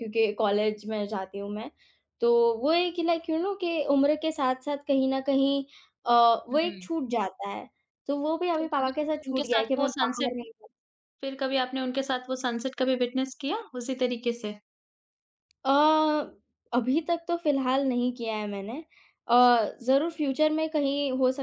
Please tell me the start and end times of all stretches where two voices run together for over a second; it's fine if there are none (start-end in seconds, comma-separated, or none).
8.6-10.3